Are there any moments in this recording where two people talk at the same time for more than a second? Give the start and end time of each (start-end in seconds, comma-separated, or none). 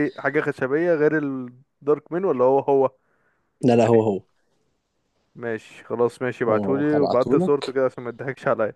6.5-7.7